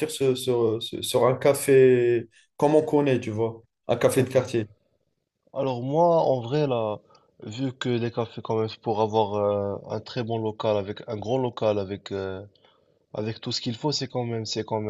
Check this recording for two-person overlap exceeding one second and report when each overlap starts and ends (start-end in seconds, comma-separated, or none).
none